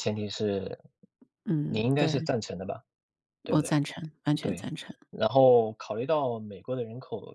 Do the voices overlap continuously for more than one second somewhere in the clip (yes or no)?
no